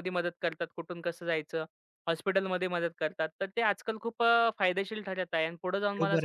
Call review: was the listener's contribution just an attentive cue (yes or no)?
no